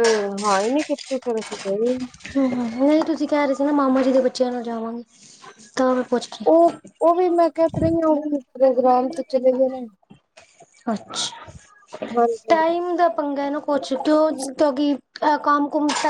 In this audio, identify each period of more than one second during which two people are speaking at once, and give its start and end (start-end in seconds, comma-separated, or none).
none